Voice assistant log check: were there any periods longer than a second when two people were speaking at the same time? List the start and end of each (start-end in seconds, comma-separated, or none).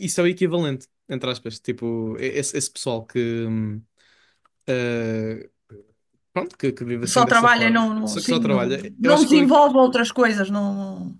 7.1-9.5